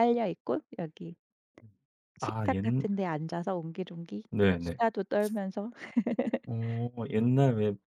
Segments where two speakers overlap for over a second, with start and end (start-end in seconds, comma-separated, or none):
none